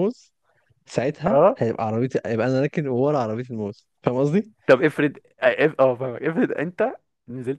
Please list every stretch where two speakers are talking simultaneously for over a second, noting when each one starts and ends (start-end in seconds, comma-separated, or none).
none